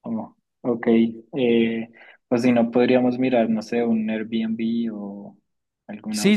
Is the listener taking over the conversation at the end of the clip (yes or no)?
yes